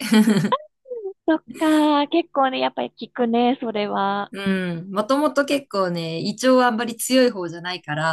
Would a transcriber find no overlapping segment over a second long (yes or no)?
yes